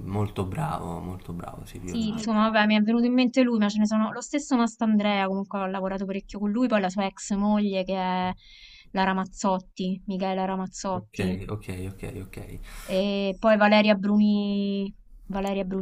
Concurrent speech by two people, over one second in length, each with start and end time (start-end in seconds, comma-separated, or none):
none